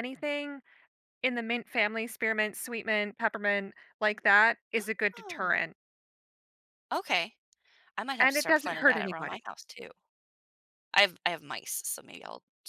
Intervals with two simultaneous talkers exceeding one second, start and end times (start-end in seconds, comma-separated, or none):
8.2-9.4